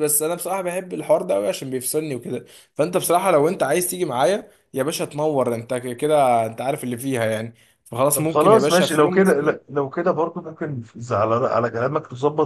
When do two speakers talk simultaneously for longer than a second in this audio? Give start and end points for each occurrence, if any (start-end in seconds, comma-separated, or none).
8.1-9.6